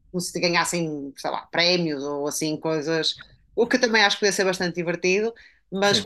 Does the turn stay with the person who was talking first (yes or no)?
yes